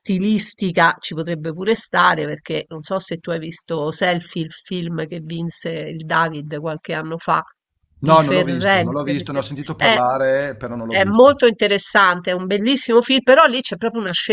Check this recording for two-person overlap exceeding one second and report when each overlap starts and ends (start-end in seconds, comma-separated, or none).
8.1-10.0